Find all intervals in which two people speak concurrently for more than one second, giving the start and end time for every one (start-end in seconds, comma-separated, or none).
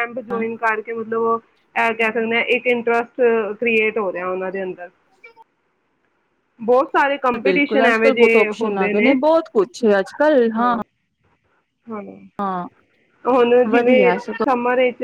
7.4-8.9